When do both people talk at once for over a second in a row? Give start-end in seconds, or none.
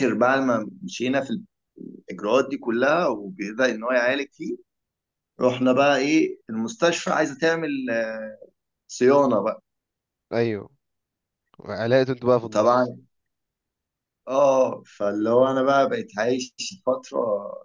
none